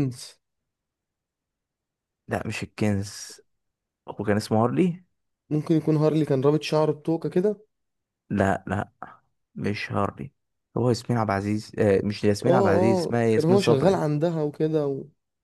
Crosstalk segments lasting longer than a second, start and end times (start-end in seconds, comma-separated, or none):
12.4-14.0